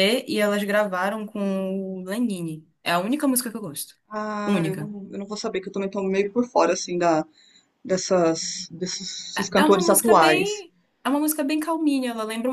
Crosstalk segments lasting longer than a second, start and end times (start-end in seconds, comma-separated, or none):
9.4-10.7